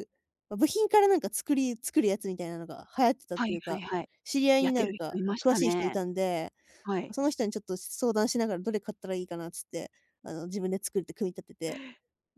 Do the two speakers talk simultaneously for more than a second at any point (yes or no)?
yes